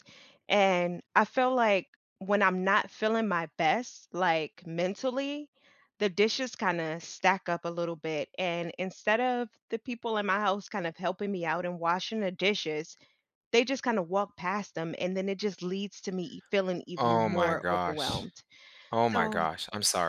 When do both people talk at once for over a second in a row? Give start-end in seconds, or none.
17.0-18.3